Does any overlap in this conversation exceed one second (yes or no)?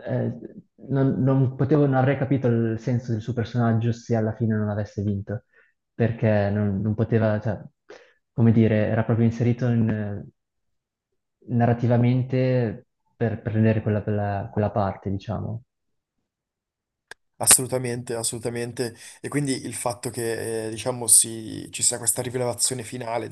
no